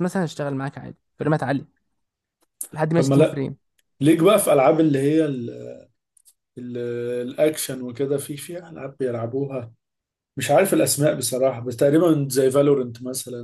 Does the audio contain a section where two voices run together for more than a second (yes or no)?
no